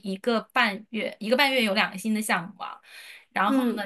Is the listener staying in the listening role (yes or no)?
yes